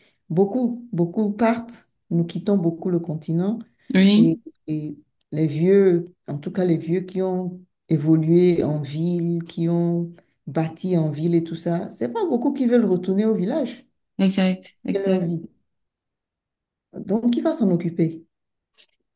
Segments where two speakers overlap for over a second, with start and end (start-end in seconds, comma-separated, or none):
none